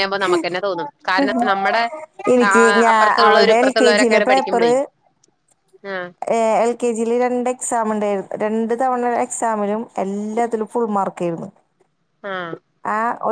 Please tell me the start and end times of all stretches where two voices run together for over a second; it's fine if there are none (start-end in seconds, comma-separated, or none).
none